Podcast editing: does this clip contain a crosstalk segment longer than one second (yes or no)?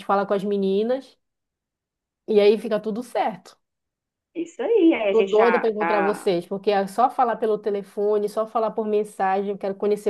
yes